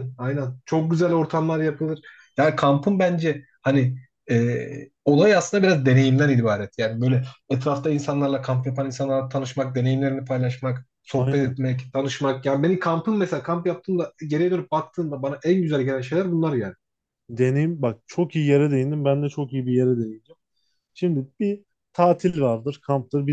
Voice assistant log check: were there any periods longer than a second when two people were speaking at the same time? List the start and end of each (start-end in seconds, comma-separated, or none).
none